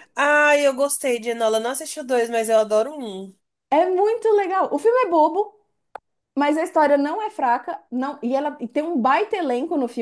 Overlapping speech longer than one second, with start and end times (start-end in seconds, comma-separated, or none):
none